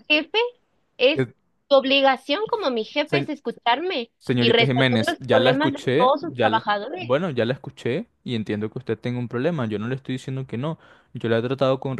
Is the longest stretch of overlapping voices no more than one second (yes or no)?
no